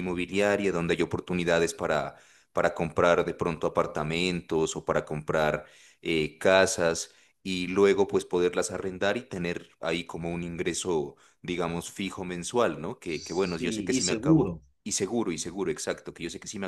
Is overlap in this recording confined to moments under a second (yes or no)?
no